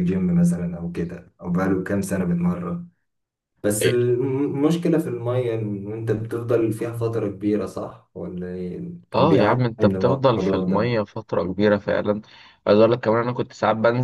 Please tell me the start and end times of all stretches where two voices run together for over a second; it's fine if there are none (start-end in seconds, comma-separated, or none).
9.2-11.0